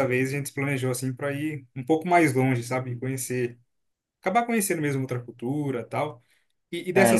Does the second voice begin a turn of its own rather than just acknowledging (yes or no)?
no